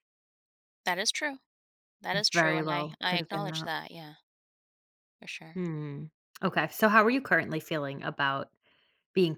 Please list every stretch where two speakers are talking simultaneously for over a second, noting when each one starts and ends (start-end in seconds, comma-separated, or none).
2.1-3.7